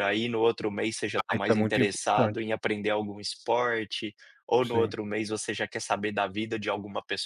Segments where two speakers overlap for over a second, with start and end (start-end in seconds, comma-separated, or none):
1.1-2.4